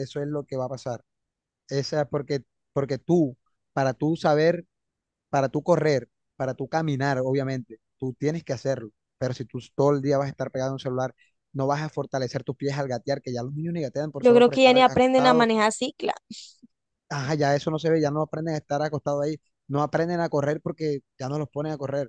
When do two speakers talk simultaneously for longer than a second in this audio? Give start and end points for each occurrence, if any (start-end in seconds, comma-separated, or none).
14.2-15.5